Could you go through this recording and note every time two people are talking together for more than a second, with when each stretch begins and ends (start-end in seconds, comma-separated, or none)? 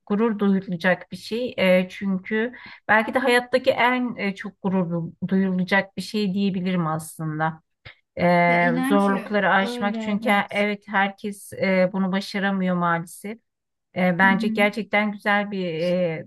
8.5-10.6